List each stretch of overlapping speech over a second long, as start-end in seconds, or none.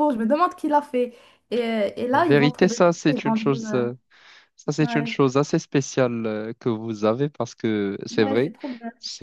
2.1-3.8